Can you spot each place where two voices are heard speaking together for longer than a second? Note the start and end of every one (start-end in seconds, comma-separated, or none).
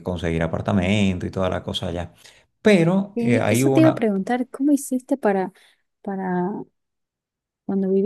none